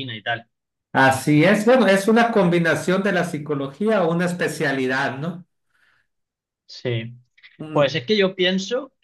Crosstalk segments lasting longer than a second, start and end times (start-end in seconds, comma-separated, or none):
none